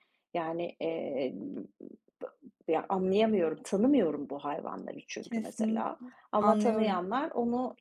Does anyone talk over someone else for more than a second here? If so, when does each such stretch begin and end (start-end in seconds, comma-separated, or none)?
5.2-7.0